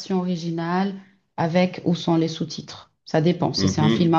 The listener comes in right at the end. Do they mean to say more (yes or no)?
yes